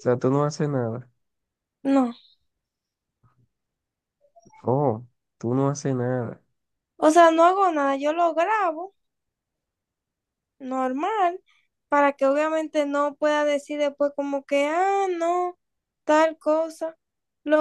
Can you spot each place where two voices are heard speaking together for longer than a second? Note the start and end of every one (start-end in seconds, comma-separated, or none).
none